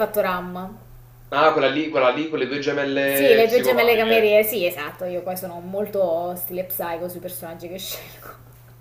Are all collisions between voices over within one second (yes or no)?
no